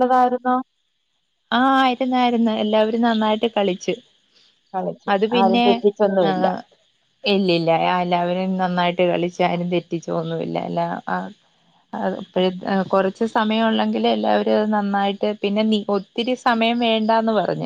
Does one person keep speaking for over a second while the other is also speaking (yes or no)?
no